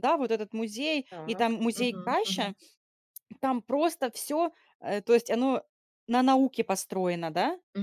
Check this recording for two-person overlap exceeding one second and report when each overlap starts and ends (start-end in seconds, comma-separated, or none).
1.1-2.5